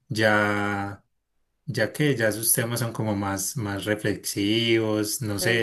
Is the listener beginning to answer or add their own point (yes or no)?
yes